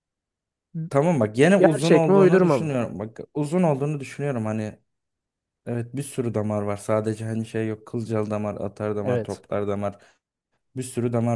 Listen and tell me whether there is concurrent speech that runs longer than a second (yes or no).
yes